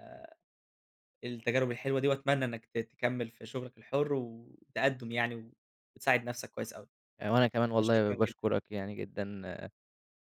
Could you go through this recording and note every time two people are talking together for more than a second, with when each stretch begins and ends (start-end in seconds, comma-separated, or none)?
none